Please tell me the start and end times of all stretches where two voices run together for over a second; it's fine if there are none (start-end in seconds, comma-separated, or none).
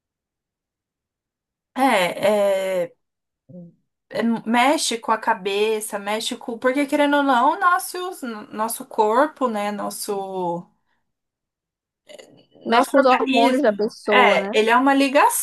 12.7-14.6